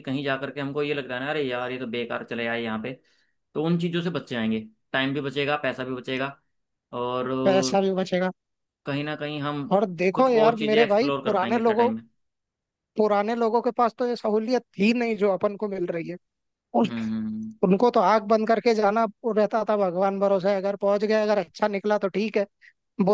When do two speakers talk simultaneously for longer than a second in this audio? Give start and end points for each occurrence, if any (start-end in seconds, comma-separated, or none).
10.1-11.9